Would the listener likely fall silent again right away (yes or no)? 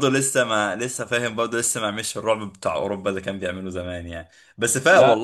yes